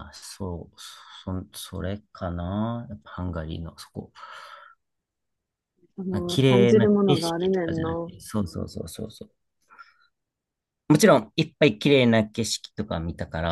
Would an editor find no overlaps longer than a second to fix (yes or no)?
no